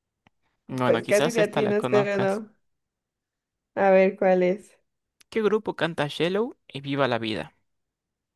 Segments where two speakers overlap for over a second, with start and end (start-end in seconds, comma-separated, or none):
0.8-2.4